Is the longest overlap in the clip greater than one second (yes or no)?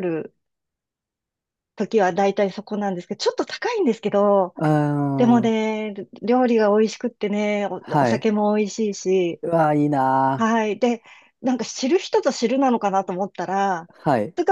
no